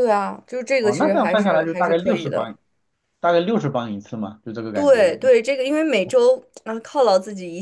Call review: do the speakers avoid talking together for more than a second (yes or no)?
no